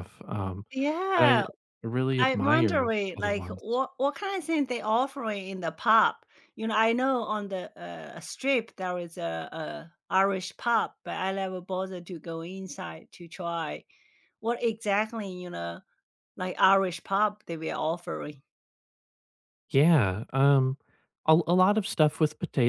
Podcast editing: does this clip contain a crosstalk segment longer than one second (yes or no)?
yes